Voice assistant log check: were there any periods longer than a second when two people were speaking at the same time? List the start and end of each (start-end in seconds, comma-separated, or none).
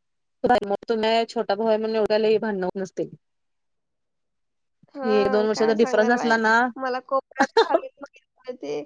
5.1-6.3